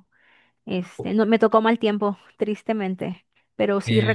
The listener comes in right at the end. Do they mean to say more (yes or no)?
no